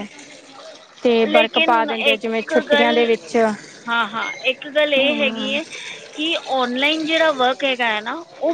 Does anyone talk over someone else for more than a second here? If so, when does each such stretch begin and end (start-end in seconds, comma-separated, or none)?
1.3-3.1